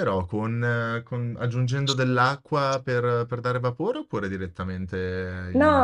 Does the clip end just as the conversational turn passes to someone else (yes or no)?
yes